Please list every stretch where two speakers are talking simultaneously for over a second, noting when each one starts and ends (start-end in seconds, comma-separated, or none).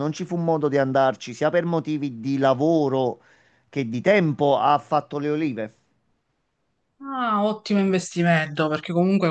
none